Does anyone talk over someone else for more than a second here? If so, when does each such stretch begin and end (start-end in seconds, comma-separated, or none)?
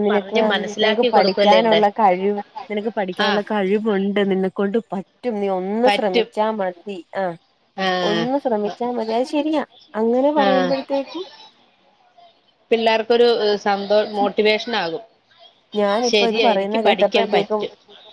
16.1-17.6